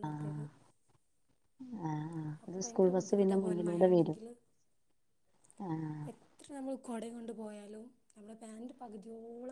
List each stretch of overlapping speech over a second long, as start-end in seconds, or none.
2.4-4.2